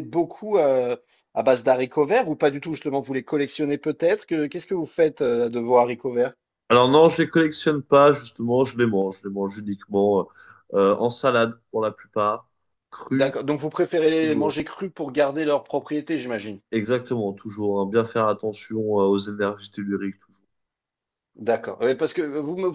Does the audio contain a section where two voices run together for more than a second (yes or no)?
no